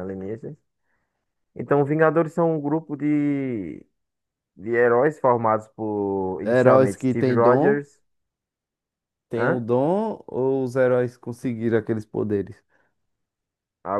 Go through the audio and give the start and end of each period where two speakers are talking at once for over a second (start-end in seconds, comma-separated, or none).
6.4-7.9